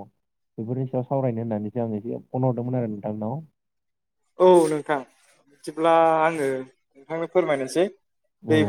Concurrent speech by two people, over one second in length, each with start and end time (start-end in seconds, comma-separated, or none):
none